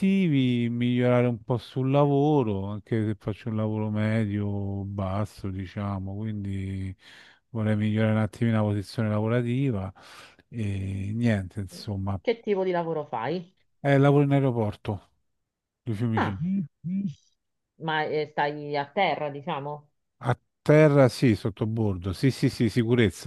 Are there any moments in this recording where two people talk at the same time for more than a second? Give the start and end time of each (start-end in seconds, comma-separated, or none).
none